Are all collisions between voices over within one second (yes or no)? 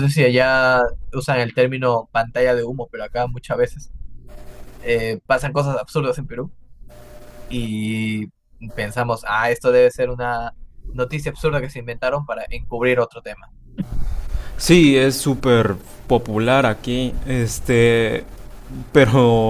yes